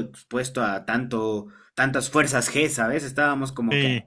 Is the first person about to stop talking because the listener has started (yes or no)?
no